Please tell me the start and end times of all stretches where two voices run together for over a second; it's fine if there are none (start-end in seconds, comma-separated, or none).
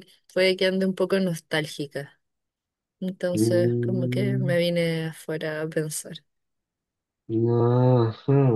3.3-4.6